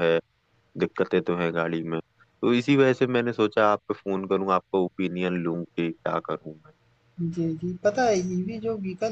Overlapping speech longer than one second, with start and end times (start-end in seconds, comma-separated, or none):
none